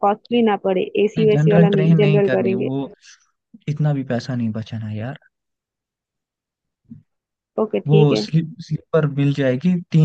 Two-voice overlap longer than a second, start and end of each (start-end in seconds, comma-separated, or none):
1.2-2.7